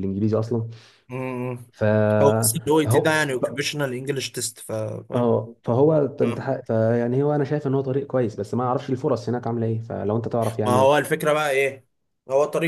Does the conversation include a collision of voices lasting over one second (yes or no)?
no